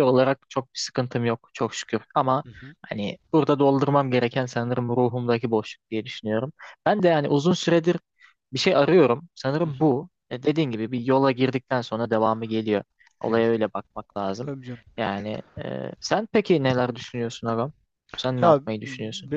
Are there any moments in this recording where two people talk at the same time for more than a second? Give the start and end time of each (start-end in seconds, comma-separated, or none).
none